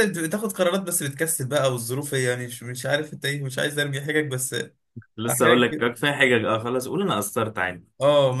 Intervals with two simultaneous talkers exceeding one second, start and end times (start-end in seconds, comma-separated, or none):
none